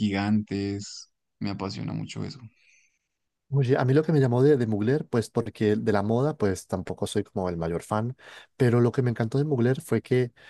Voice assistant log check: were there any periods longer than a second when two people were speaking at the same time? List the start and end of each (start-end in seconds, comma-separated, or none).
none